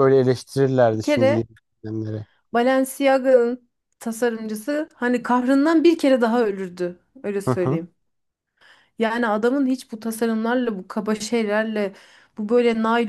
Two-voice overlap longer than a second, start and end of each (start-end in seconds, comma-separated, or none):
none